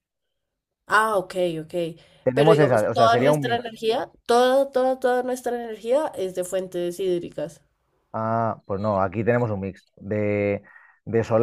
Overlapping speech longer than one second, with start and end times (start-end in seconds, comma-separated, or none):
2.3-3.7